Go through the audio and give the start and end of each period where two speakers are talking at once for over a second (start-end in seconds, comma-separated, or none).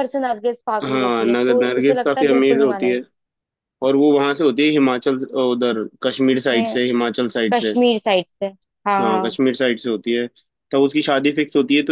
0.8-3.0